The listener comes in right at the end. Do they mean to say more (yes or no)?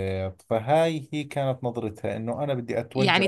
yes